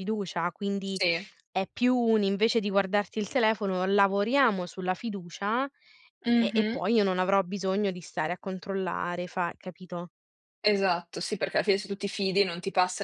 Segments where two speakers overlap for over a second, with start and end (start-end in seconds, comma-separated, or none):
none